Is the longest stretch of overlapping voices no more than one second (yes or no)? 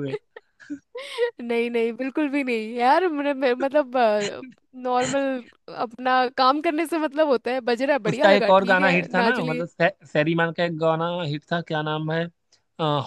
no